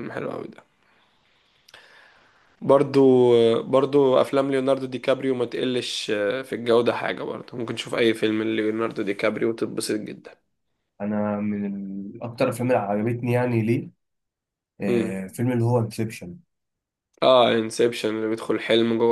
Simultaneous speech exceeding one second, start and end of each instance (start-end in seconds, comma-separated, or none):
none